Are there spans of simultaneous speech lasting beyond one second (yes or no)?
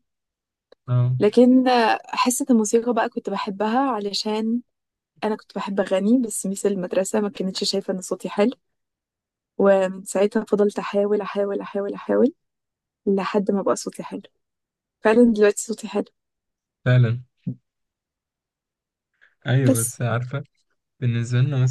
no